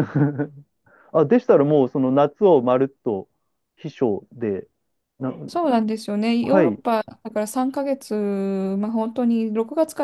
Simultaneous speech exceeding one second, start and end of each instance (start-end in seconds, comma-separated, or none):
none